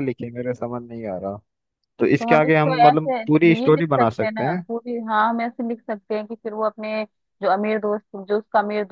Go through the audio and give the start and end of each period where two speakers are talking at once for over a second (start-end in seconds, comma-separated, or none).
2.2-4.6